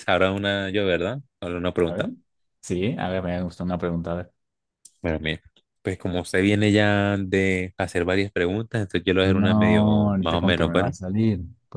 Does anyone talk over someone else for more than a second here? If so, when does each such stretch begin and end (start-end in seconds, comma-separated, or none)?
9.2-10.9